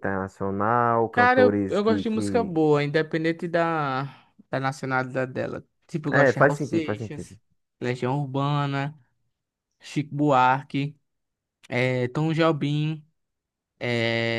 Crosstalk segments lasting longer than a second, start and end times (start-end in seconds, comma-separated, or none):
1.1-2.5, 6.1-7.4